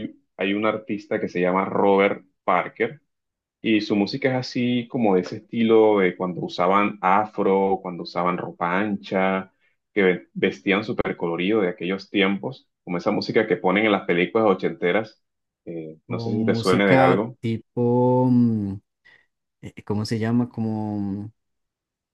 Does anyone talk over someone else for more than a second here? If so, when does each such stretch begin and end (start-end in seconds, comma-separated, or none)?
16.1-17.4